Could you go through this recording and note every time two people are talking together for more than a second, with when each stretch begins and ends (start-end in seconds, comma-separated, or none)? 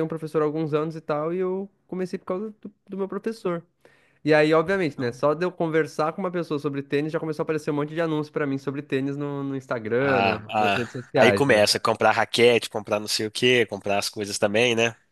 10.0-11.6